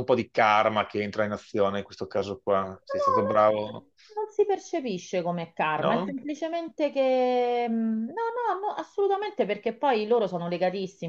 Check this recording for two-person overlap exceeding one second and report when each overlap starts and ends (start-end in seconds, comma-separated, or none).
none